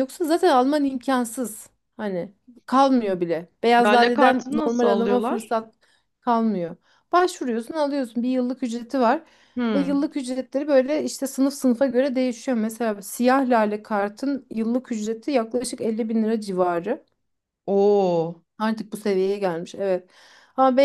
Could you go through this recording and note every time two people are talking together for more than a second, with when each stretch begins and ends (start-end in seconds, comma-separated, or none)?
3.9-5.5